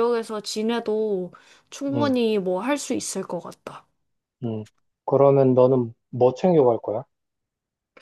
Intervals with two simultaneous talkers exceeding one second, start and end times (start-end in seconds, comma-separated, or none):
none